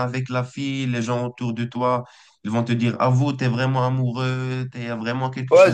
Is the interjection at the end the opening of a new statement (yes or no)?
yes